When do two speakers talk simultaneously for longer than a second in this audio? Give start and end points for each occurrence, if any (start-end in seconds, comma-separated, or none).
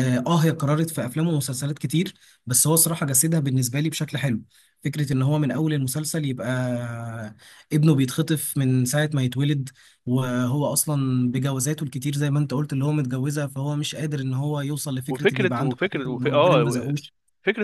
15.1-16.9